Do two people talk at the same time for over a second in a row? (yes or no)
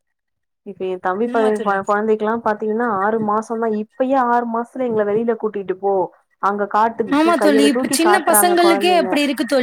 yes